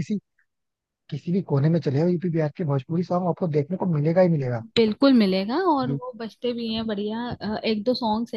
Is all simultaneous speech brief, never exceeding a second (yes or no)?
yes